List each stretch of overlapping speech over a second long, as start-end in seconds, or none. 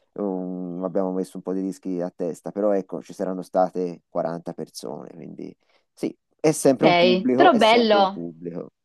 6.6-8.3